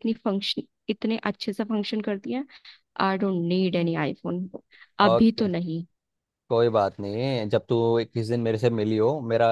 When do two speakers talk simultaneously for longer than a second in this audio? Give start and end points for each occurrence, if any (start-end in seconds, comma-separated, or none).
none